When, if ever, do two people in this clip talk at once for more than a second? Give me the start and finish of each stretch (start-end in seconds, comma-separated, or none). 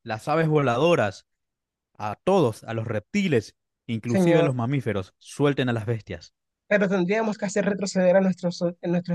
none